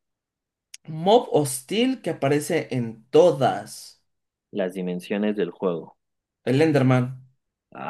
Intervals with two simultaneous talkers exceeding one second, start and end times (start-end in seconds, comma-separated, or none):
none